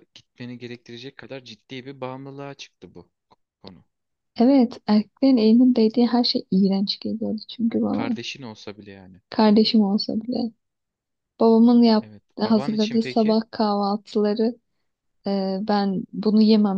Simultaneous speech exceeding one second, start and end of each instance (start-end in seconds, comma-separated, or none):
12.0-13.4